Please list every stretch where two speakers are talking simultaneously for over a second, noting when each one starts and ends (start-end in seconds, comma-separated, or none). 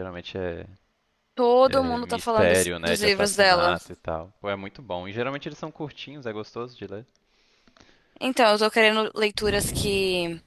1.7-3.8